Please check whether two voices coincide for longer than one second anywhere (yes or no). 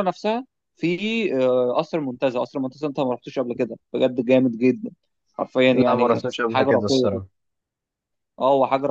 yes